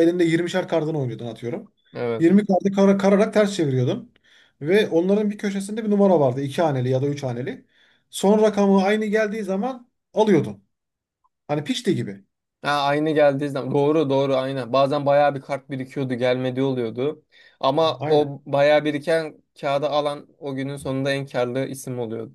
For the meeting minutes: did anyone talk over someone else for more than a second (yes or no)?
no